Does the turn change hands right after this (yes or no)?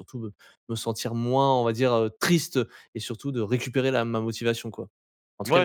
yes